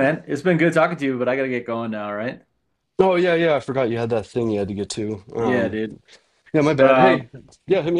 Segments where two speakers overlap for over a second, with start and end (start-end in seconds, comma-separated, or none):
none